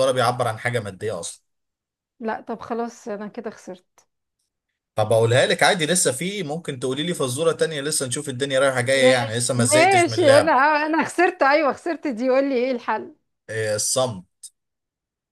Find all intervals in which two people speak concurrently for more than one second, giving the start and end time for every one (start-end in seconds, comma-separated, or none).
8.9-10.6